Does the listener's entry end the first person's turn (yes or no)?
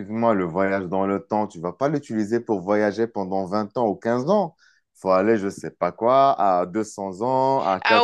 no